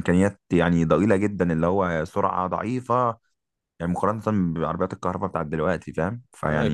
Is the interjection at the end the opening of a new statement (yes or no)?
no